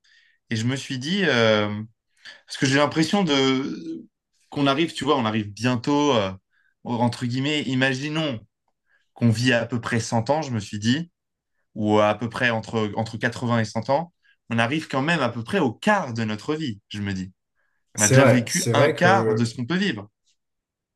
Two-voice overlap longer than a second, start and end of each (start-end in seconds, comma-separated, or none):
18.0-19.5